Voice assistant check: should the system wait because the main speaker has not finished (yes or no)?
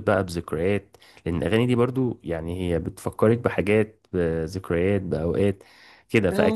yes